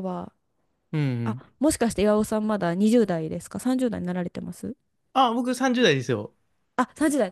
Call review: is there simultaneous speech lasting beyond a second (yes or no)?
no